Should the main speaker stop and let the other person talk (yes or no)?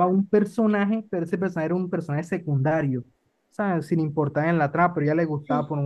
no